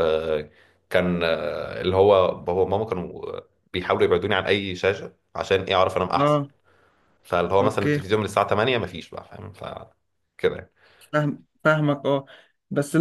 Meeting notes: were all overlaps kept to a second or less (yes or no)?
yes